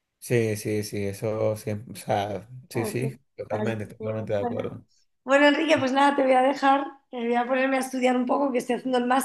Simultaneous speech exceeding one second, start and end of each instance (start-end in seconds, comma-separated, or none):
2.7-4.8